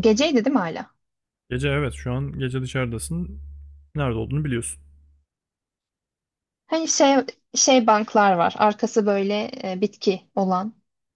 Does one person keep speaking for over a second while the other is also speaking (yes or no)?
no